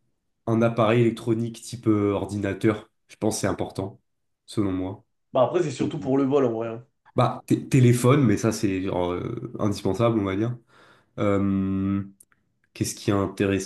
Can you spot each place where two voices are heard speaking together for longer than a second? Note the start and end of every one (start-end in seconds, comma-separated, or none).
none